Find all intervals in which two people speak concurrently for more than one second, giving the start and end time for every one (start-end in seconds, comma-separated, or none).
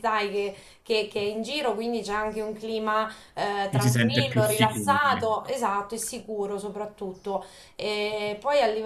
3.7-5.5